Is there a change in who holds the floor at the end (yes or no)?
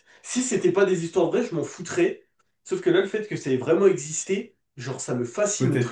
yes